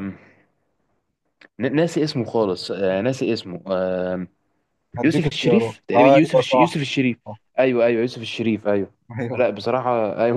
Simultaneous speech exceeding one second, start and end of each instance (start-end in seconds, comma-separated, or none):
5.0-6.8